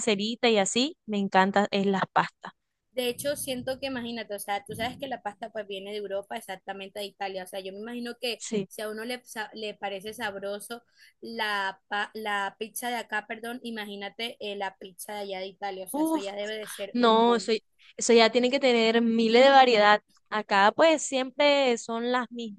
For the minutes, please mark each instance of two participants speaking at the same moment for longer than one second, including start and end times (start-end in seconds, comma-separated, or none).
none